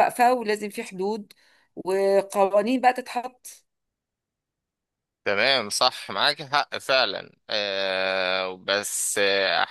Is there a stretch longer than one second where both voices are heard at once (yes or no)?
no